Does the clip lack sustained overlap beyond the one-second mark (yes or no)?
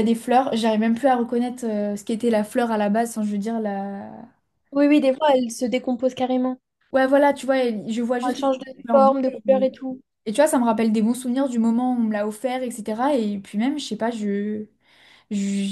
no